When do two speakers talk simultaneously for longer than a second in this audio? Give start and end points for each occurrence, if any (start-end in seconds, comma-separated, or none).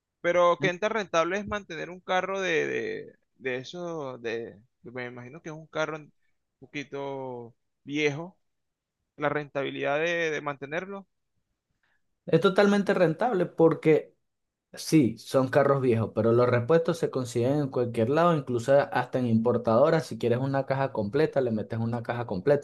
none